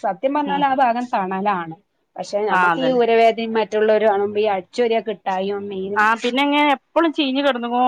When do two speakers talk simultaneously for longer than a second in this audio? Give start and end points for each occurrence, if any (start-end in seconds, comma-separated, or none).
none